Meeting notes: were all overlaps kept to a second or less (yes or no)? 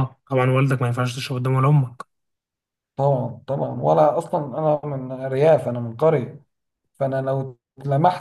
yes